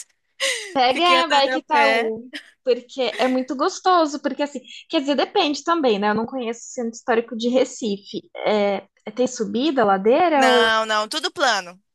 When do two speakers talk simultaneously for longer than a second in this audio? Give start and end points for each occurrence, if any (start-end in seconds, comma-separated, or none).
0.9-2.1